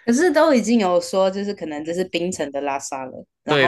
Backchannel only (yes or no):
no